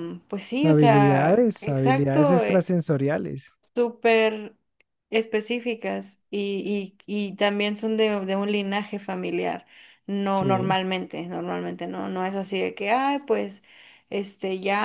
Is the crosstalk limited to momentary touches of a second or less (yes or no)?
no